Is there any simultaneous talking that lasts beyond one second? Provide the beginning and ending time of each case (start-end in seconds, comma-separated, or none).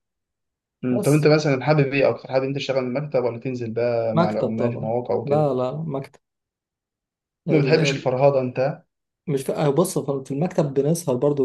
4.1-5.5